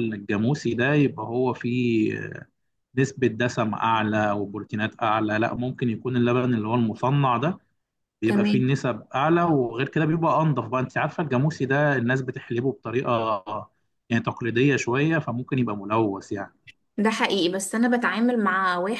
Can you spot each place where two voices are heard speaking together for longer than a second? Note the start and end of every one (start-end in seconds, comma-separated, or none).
none